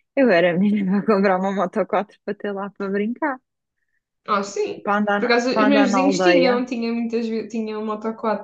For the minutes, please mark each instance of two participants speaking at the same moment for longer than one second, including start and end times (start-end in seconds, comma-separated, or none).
4.8-6.6